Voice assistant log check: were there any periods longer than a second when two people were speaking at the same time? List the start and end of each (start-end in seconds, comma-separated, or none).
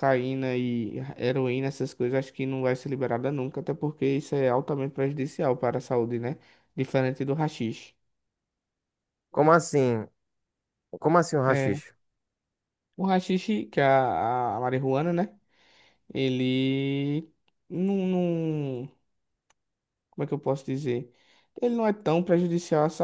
none